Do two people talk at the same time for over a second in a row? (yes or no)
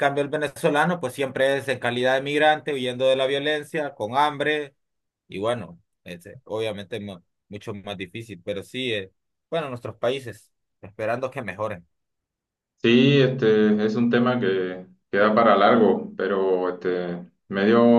no